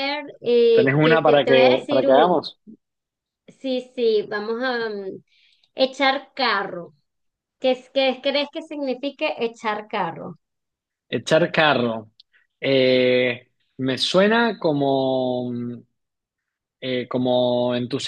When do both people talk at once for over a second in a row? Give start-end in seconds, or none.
0.7-2.4